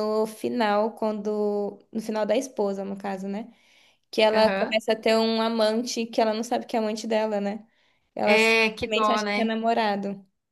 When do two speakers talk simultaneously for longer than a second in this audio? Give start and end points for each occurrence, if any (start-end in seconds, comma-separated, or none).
8.2-9.5